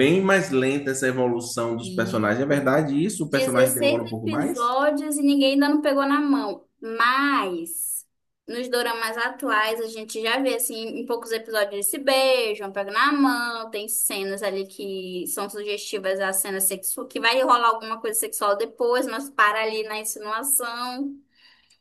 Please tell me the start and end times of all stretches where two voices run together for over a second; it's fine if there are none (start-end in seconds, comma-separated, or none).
3.2-4.6